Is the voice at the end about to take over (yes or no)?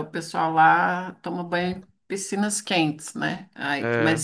no